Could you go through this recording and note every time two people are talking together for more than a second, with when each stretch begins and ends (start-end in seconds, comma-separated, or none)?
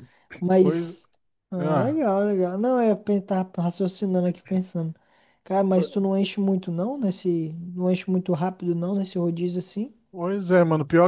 none